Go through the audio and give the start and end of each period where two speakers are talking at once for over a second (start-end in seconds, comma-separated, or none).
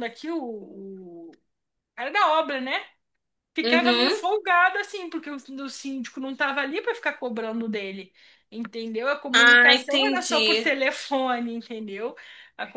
9.3-10.7